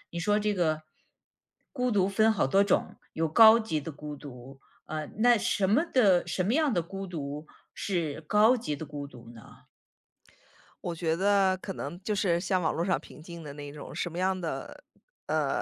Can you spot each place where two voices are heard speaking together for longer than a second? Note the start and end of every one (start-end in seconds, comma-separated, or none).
none